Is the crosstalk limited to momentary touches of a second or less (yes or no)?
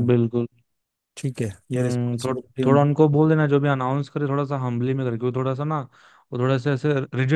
no